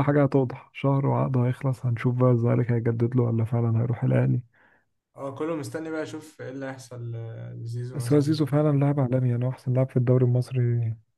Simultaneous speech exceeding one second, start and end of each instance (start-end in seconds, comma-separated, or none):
none